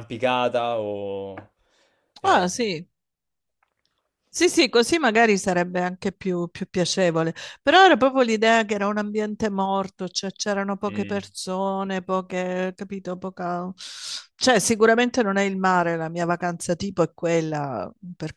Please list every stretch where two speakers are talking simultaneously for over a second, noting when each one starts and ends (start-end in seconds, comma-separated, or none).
none